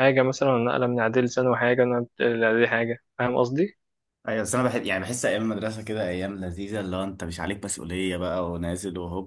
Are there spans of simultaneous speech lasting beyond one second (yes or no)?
no